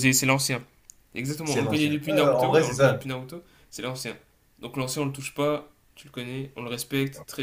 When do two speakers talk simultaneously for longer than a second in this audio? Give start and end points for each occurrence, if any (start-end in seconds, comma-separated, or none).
1.4-3.0